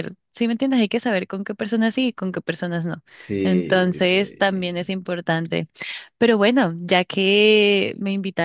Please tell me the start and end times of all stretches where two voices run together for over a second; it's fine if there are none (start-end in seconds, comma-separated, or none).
3.4-5.0